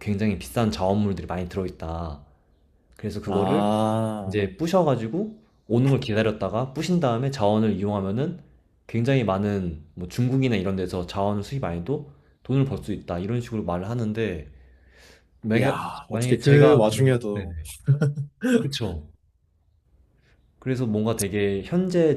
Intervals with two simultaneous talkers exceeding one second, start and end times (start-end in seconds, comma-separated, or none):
15.6-17.6